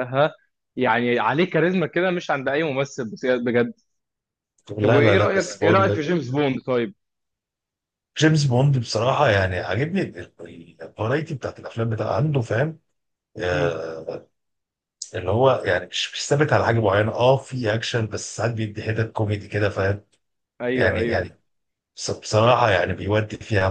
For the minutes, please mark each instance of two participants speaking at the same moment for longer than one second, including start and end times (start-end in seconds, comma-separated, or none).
4.8-6.1